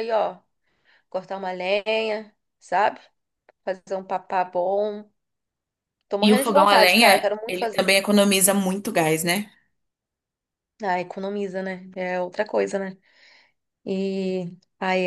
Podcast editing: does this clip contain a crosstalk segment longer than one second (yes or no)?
yes